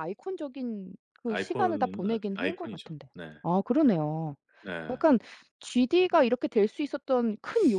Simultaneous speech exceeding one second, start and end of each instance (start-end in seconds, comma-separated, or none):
1.3-3.3